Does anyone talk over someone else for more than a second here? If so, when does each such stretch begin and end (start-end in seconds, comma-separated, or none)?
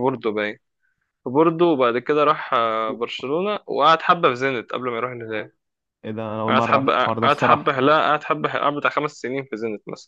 6.5-7.8